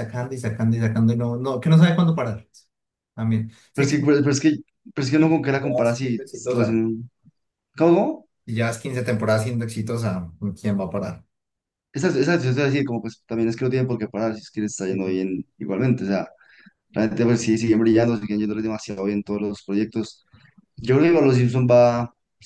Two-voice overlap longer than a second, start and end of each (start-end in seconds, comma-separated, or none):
5.2-6.8